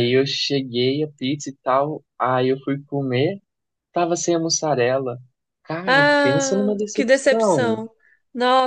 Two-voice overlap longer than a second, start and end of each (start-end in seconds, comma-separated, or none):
5.8-7.8